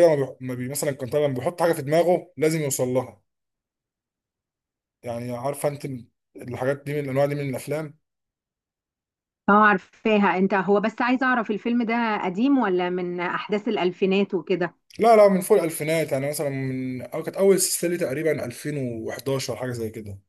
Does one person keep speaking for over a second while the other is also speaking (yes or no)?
no